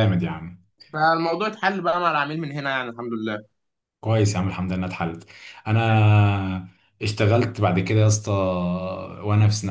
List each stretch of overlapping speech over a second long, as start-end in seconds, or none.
none